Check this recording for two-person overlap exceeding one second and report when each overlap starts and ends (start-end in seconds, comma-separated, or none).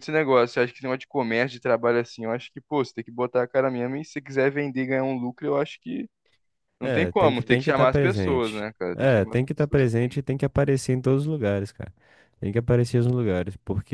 6.8-10.2